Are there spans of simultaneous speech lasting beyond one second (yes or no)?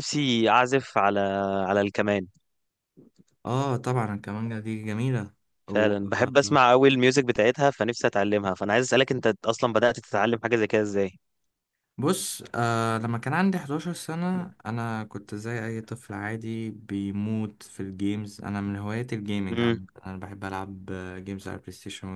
no